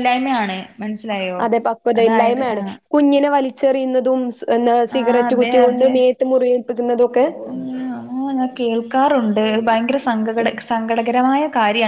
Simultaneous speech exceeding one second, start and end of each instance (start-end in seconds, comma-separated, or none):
none